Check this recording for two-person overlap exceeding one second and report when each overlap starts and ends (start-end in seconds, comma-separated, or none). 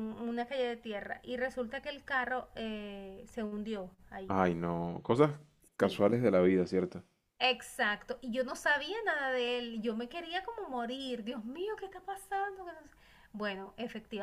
none